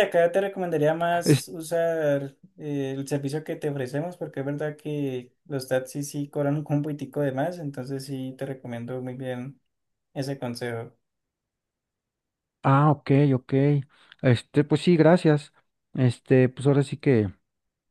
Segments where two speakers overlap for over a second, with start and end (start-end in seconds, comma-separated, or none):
none